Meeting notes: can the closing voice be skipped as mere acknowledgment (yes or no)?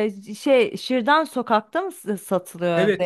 no